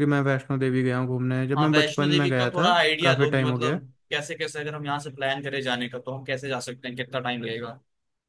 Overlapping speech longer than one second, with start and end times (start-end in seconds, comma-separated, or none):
1.6-3.8